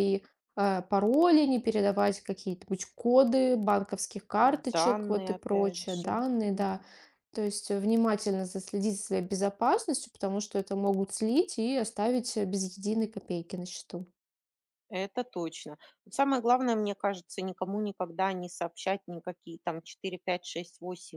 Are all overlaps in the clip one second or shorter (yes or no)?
no